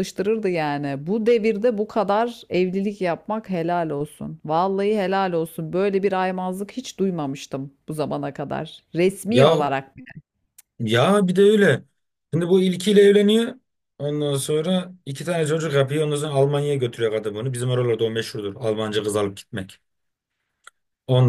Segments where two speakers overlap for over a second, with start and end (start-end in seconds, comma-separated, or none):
none